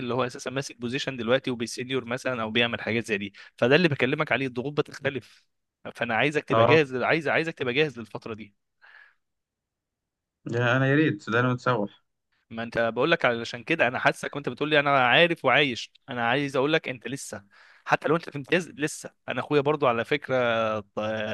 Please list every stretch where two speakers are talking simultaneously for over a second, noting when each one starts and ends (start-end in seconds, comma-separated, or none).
none